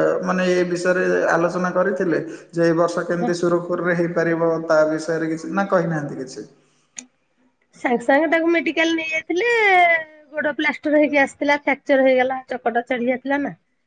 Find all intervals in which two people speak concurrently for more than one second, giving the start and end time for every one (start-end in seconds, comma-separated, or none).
none